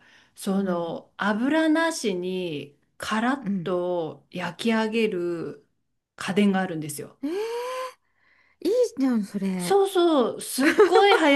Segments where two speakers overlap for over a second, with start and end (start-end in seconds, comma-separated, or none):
none